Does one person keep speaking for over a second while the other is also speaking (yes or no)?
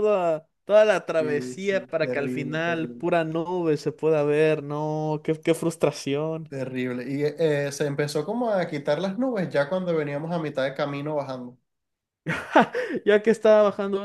yes